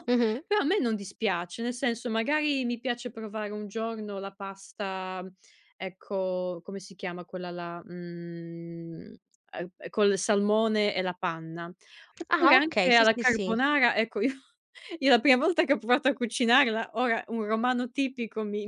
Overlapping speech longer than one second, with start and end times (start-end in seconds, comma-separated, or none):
12.3-13.6